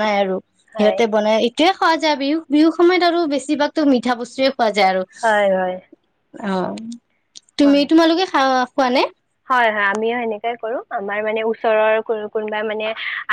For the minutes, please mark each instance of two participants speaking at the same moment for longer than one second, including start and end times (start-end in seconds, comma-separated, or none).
none